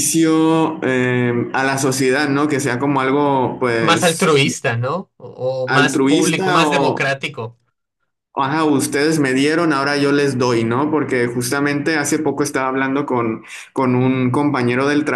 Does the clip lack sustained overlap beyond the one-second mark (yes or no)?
no